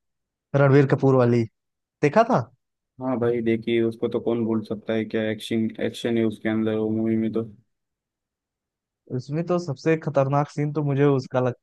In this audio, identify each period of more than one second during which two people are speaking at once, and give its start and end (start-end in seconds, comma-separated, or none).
none